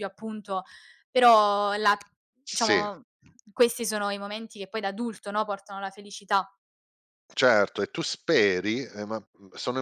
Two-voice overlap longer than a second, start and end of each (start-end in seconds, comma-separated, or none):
none